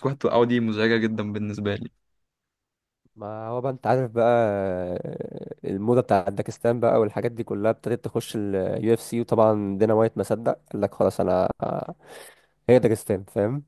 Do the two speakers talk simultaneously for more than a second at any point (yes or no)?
no